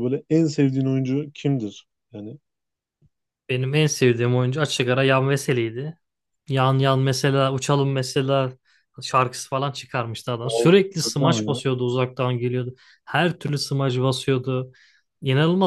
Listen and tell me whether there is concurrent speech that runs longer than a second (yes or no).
no